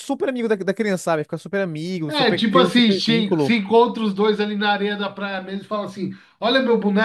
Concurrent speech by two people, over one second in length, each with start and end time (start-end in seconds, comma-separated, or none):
2.1-3.6